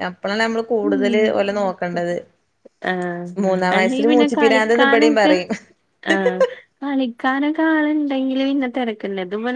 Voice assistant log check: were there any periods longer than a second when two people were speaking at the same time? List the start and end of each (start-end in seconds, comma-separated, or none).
3.8-5.3